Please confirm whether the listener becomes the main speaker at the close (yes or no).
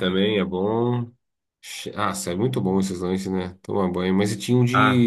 no